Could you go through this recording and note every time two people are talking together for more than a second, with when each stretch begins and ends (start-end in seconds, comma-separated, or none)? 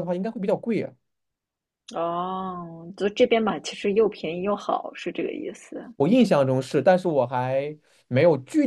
none